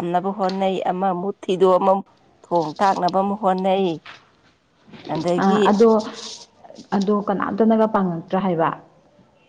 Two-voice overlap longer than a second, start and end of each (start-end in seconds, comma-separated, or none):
none